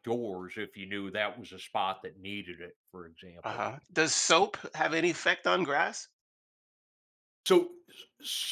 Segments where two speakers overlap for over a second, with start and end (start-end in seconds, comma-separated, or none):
none